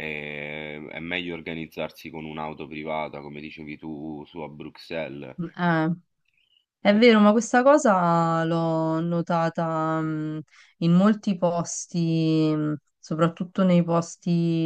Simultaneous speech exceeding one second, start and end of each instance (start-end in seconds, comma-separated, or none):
none